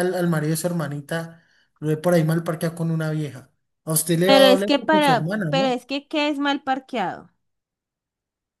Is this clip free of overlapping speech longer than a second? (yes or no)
no